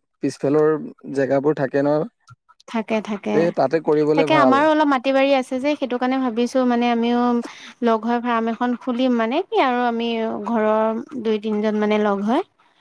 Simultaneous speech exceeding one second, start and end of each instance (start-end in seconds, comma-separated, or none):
none